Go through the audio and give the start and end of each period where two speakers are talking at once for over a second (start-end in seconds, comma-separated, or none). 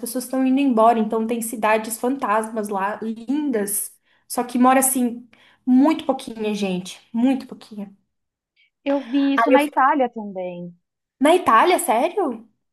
none